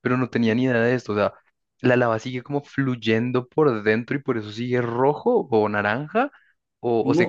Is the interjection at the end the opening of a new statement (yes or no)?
yes